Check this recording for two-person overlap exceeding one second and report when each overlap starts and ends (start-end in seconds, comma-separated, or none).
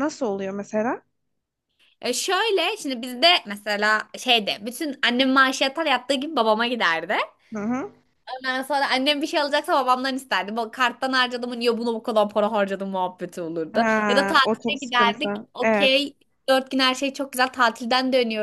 13.7-16.0